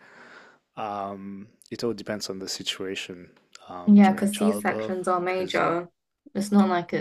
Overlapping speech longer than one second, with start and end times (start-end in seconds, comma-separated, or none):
3.9-5.6